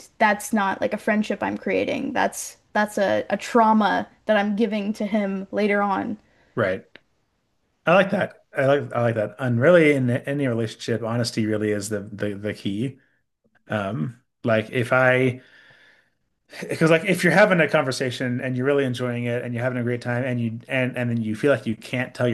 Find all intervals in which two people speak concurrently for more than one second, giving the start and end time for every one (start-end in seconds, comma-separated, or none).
none